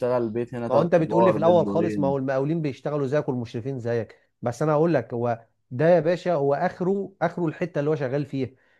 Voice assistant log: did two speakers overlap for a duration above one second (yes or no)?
yes